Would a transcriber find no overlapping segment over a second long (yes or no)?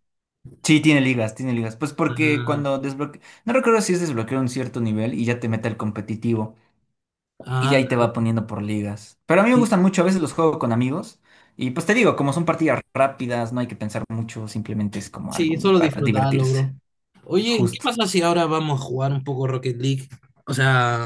no